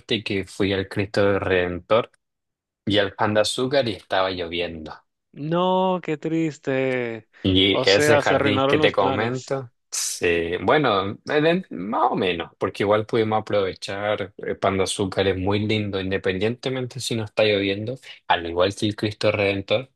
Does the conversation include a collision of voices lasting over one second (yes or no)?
yes